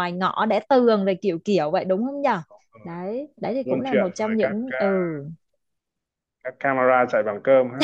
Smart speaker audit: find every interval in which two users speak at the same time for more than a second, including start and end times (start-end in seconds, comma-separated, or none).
3.6-5.1